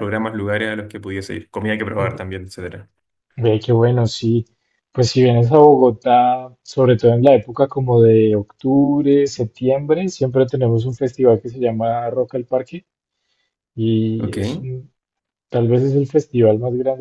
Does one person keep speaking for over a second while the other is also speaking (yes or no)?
no